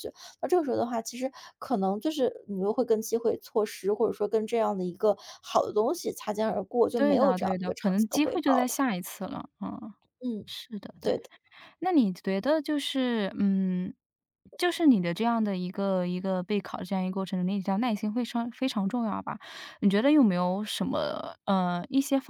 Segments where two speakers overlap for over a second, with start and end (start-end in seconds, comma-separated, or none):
7.0-8.7